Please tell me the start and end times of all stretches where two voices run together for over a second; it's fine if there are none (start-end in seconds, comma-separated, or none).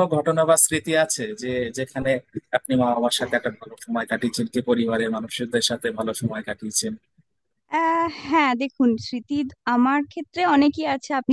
none